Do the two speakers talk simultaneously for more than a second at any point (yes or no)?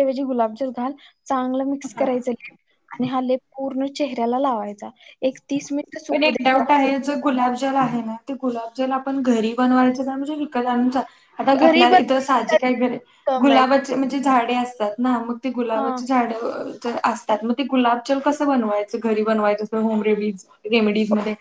no